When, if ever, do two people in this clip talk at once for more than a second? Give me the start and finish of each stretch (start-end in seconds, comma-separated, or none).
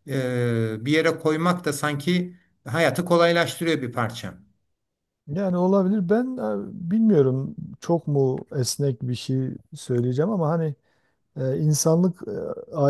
none